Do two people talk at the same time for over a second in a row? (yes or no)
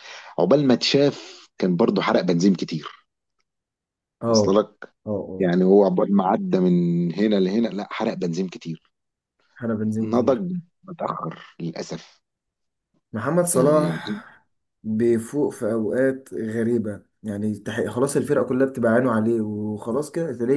no